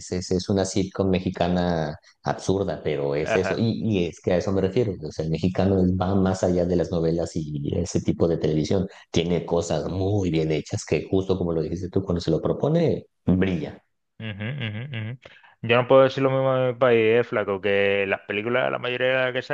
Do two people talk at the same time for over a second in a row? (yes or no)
no